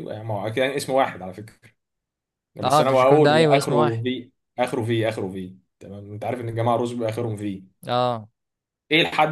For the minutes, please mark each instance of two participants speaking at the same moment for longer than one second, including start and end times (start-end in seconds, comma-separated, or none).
2.6-4.0